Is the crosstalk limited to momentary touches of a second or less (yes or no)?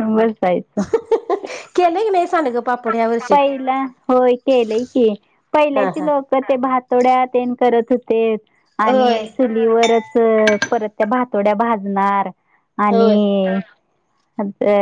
yes